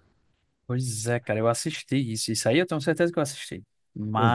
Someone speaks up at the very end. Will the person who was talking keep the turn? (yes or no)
yes